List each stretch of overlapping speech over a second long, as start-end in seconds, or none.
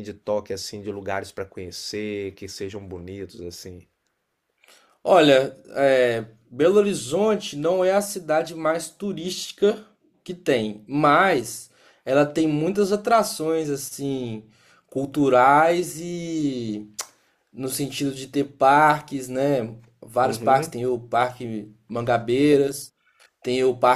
none